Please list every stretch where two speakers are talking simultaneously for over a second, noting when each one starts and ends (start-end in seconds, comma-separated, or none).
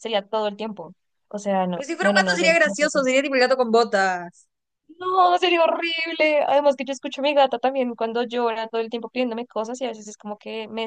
1.7-3.1